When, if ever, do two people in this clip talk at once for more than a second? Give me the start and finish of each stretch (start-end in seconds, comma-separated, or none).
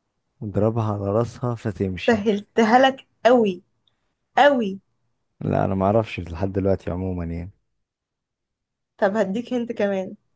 none